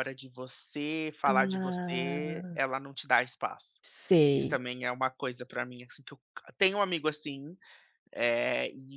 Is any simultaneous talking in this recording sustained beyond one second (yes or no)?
yes